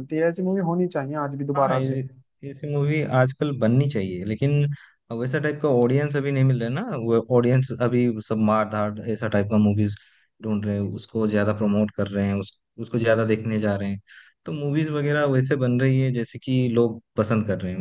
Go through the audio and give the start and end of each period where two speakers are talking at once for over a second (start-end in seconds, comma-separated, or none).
none